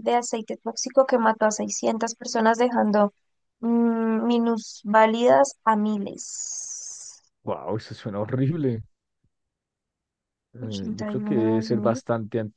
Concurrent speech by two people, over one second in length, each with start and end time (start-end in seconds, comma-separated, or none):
10.6-12.0